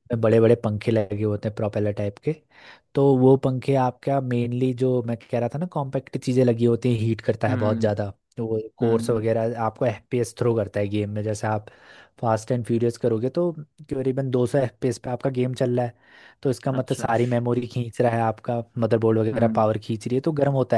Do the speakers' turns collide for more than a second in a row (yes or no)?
no